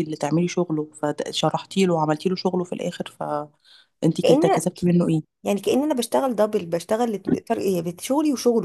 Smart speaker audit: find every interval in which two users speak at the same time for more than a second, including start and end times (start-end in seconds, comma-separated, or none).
none